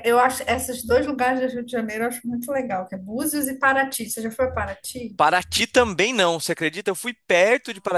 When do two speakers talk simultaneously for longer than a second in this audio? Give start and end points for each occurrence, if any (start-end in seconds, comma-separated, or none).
none